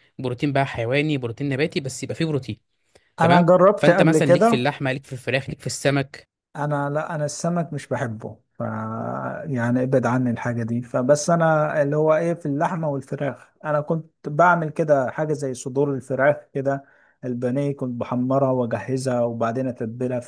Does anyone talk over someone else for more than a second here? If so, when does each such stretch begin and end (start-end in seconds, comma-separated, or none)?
3.2-4.7